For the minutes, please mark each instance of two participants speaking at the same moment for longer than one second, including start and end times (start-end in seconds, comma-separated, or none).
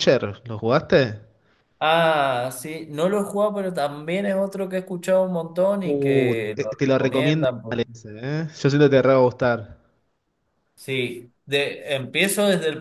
5.8-7.8